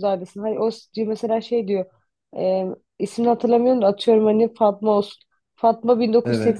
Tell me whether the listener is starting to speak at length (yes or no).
no